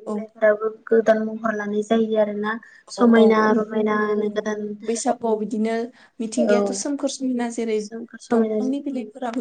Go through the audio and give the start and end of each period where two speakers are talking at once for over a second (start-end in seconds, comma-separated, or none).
none